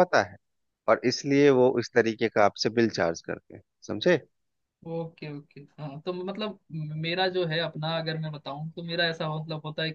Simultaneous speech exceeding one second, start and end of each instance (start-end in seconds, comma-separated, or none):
none